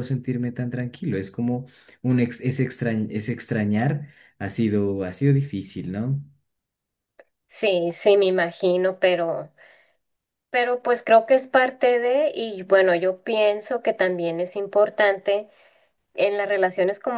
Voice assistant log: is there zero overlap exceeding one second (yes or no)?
yes